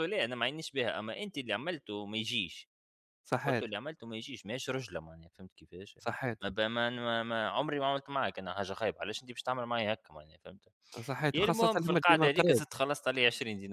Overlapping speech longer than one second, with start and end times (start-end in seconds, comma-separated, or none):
11.3-12.6